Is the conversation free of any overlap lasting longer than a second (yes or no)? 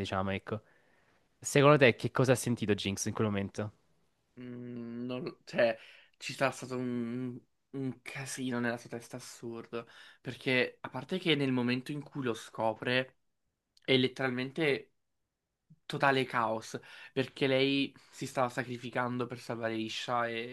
yes